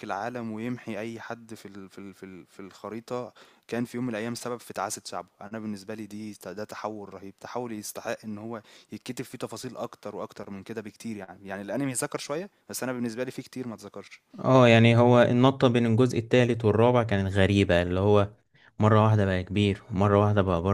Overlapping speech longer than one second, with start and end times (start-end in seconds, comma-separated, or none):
none